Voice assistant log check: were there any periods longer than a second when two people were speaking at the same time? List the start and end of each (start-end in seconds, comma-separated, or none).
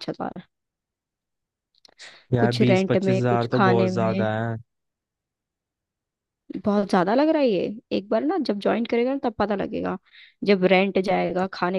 2.4-4.3